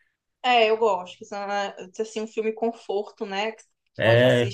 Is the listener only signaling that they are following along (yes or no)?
yes